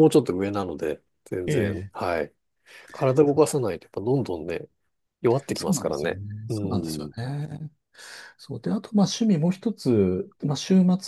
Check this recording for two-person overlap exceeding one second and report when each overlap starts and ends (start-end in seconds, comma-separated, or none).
5.5-7.1